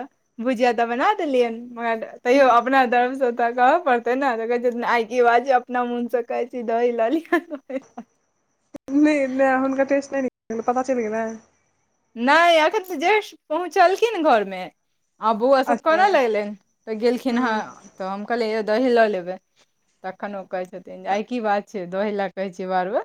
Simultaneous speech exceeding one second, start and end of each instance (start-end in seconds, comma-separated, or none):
none